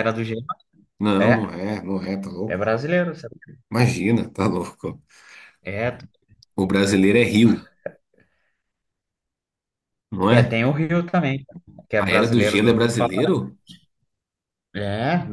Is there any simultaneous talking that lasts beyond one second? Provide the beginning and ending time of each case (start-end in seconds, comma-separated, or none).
12.0-13.3